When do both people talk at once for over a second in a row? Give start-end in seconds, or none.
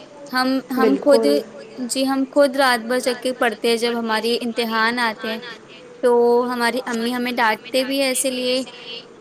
7.4-8.6